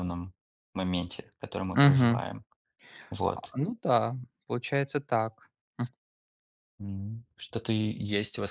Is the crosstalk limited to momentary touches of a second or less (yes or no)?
yes